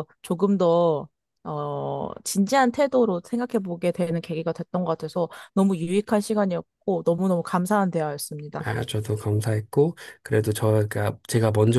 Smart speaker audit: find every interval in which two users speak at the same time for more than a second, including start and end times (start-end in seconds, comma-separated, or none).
none